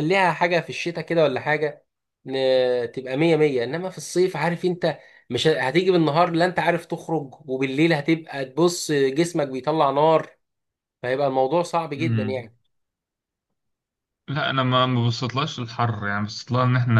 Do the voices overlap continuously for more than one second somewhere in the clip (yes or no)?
no